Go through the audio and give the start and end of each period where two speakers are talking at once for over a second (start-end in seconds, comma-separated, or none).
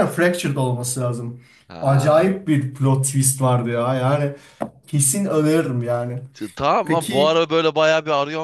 none